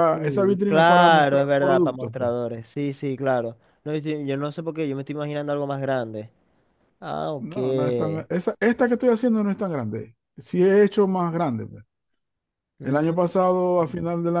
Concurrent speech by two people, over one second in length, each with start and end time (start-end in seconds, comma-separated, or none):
0.7-2.3